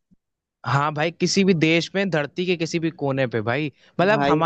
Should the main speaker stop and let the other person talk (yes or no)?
no